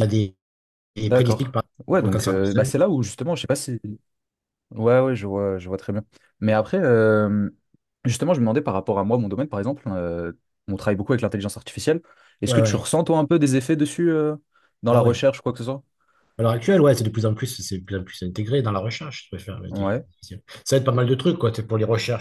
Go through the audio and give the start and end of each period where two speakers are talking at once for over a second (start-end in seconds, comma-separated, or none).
1.0-2.7